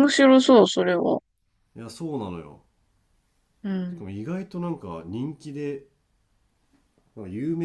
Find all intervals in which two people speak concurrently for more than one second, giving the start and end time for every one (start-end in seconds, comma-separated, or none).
none